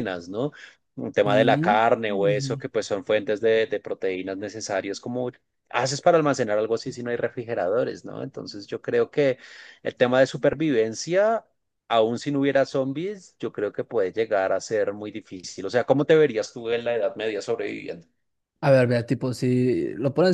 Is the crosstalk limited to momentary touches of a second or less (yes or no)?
no